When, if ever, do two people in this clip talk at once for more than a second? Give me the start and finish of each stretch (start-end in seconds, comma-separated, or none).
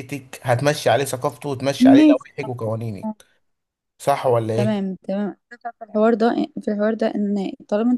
none